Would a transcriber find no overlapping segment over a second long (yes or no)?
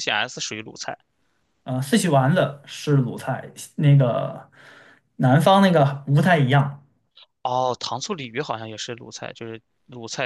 yes